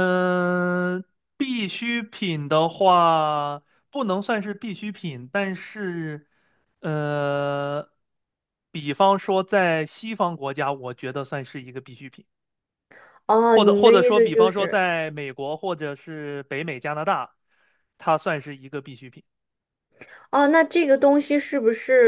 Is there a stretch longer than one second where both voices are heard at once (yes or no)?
yes